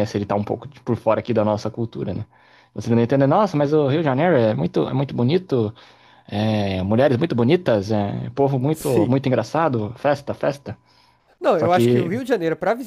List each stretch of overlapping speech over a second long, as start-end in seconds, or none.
none